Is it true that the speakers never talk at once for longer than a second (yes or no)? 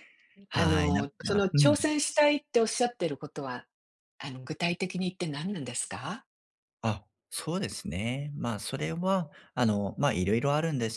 no